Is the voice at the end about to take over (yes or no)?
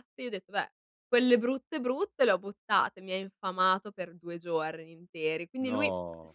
no